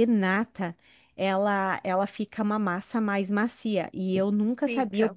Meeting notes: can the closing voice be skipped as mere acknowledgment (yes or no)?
yes